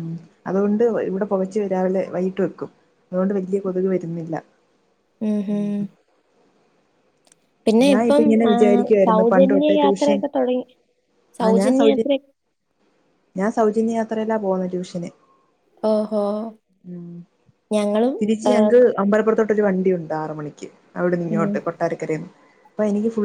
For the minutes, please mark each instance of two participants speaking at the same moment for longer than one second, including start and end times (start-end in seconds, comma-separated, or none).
8.0-10.2